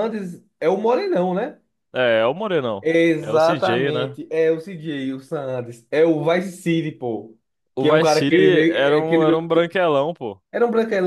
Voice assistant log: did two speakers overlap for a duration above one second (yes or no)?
yes